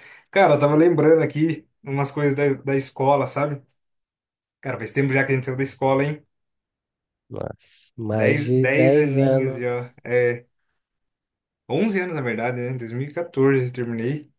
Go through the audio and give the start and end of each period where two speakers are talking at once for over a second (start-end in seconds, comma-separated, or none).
8.1-10.0